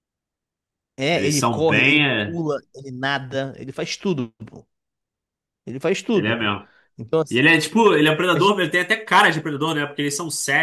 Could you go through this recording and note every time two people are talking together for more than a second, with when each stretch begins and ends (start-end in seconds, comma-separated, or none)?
1.1-2.4